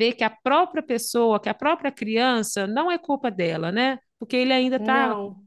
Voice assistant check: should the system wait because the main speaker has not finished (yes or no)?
yes